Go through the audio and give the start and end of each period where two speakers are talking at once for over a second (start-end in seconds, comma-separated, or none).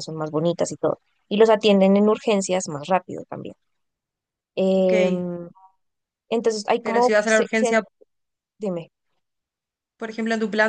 none